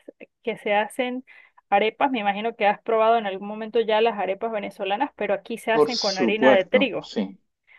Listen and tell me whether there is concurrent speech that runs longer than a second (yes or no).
yes